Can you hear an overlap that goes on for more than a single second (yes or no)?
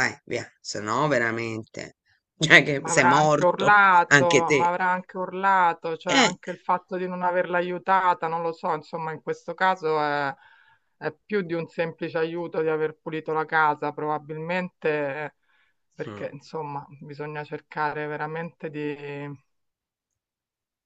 yes